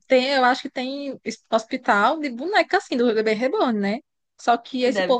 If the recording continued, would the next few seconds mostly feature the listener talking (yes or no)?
no